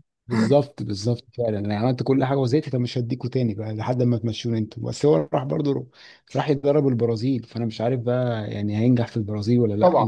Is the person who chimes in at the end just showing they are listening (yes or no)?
no